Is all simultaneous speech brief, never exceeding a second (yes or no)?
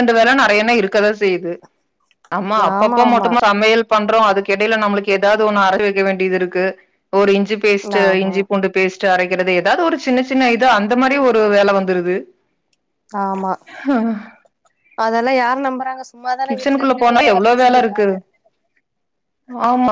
no